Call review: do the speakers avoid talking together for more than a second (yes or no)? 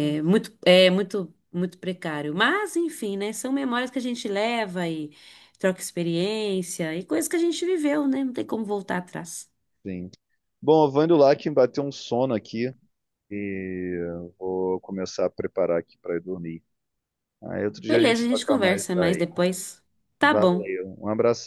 no